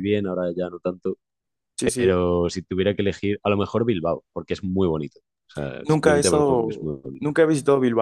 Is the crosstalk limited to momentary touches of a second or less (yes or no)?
no